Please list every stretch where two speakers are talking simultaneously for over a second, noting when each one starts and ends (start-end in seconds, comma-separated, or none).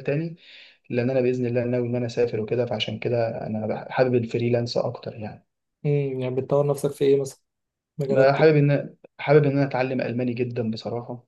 none